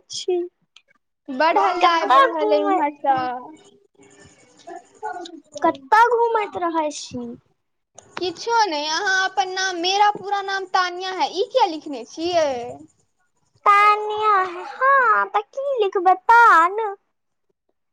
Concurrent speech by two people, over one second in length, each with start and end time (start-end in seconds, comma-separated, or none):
1.5-2.8